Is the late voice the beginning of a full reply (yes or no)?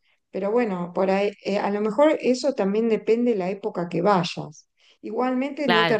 no